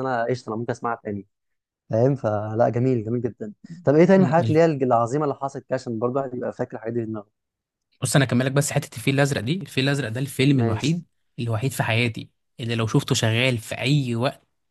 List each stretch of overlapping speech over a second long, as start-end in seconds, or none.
none